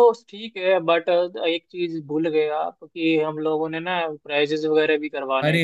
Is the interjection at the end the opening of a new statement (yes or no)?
yes